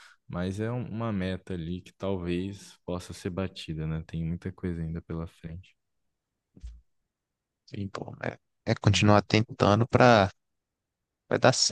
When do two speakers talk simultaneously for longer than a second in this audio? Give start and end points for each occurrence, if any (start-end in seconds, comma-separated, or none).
none